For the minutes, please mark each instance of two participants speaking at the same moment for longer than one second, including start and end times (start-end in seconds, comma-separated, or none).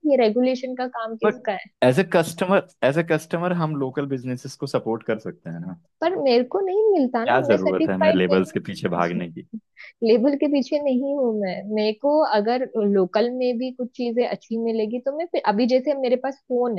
7.2-8.6